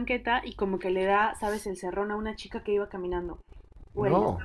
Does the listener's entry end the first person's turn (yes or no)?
no